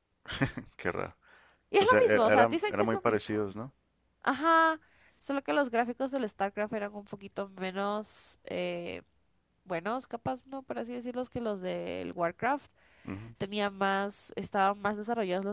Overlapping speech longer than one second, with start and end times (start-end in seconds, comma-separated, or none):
1.8-3.4